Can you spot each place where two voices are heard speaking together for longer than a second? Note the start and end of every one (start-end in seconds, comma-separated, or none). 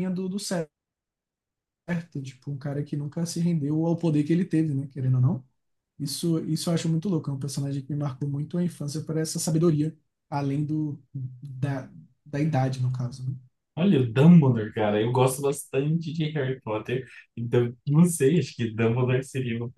none